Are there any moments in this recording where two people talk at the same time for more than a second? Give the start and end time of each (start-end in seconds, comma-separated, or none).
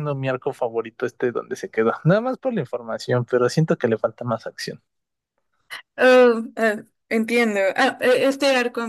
none